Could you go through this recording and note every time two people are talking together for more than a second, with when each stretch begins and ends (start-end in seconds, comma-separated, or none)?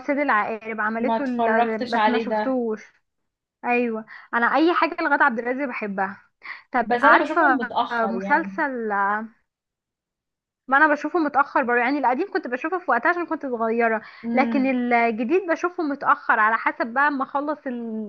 1.0-2.6, 6.8-8.6